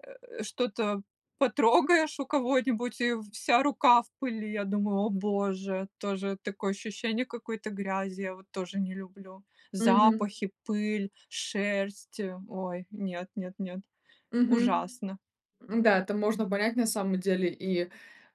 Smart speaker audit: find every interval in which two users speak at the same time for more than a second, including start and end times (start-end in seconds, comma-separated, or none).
none